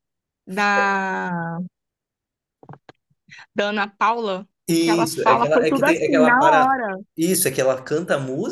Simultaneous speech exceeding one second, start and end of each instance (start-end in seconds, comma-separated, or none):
4.7-6.8